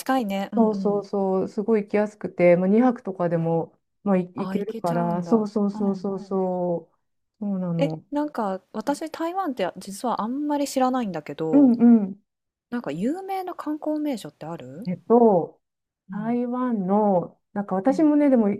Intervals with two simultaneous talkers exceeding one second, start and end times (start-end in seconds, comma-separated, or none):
4.4-6.0